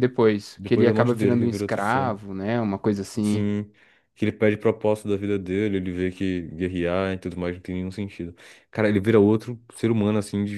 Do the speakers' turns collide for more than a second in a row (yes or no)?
yes